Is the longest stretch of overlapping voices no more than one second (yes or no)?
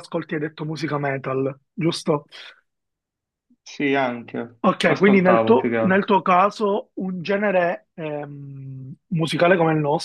no